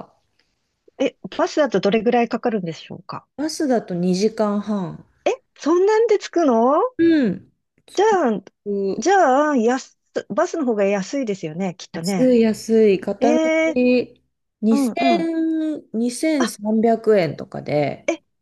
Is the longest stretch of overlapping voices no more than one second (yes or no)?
yes